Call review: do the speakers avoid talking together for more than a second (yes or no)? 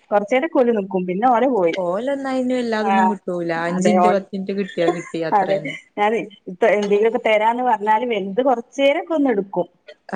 yes